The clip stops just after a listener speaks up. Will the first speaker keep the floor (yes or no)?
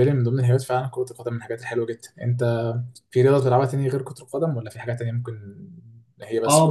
no